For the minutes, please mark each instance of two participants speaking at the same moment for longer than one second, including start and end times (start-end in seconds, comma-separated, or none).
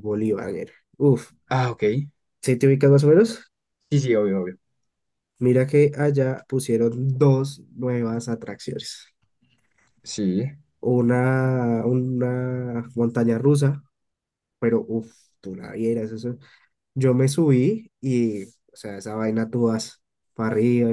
none